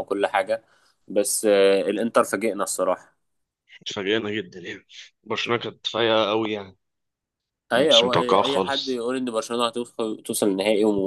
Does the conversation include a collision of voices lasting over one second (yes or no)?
yes